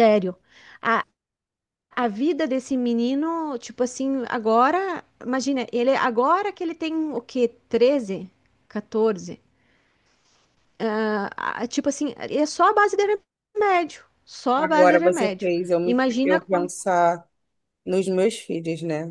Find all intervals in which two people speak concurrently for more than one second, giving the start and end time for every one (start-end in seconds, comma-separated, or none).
14.6-16.7